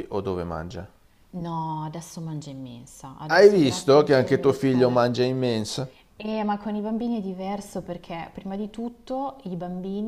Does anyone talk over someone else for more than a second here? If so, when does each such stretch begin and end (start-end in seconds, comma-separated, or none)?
3.2-5.0